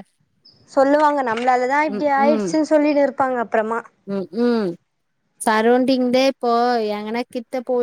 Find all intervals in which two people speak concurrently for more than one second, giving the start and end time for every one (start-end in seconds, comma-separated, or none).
none